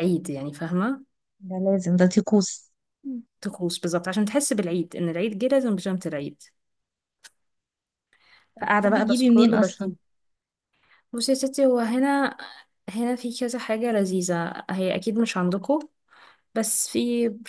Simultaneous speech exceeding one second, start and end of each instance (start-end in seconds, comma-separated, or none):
8.6-9.9